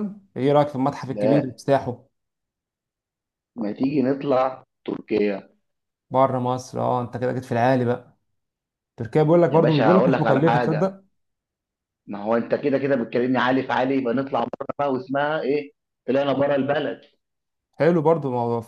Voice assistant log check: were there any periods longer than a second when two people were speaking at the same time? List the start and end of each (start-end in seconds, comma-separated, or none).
9.5-11.0